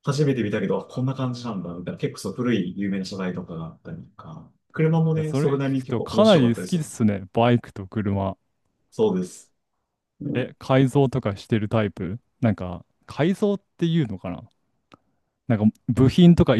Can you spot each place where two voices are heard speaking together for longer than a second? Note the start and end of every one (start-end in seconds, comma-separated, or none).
5.1-6.8